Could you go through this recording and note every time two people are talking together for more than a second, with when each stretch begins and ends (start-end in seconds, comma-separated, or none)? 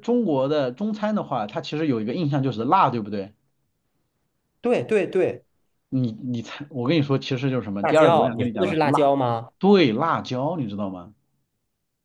7.8-9.1